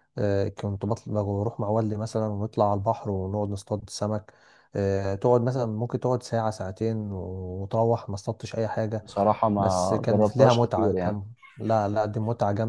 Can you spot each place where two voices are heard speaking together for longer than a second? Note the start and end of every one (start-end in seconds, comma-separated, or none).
9.6-11.2